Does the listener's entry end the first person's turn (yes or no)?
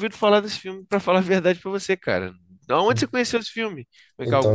yes